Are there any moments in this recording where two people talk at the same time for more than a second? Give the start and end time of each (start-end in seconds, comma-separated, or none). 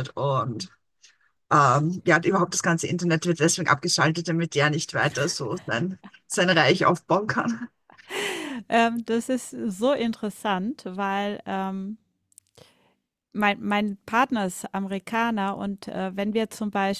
none